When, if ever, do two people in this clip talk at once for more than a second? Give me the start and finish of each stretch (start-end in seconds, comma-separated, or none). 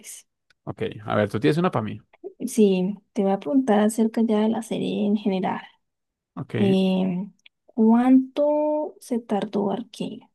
none